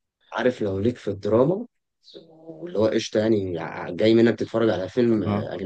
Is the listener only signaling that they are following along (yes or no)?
yes